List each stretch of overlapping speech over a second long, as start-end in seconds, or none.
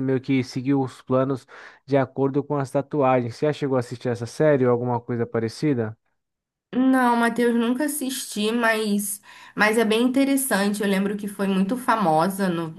none